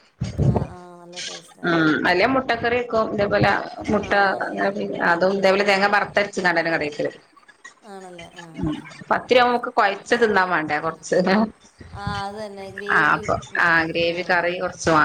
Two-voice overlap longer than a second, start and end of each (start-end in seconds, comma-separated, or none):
none